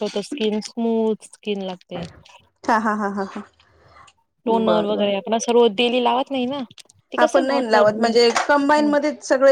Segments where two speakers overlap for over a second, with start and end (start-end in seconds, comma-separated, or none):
none